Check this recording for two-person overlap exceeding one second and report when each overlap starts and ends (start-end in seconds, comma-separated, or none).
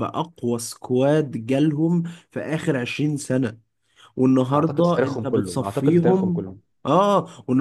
4.5-6.5